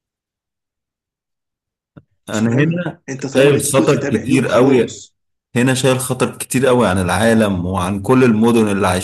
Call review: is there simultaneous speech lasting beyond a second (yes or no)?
yes